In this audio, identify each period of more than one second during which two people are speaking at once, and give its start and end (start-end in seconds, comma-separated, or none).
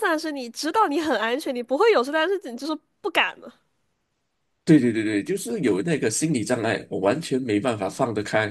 none